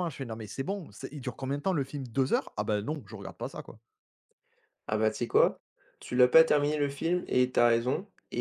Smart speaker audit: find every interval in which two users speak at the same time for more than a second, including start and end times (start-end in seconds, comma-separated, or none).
none